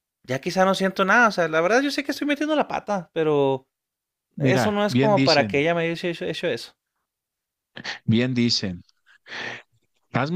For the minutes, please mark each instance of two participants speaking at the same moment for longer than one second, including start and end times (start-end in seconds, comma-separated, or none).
4.4-5.6